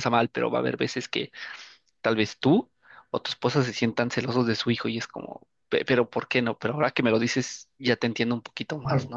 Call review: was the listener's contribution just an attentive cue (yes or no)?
no